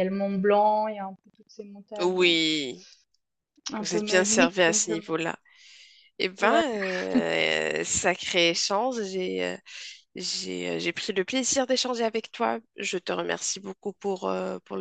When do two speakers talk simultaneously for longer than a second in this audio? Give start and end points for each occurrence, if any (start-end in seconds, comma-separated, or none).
3.8-5.0